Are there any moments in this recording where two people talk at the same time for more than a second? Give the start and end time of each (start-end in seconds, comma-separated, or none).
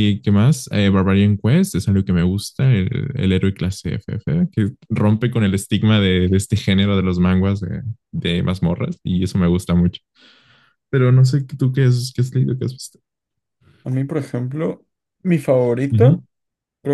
none